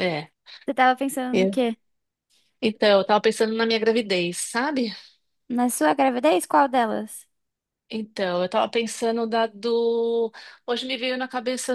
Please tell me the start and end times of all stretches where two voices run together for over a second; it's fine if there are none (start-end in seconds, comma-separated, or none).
none